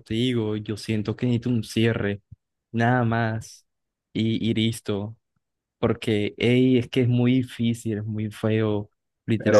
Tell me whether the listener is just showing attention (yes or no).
yes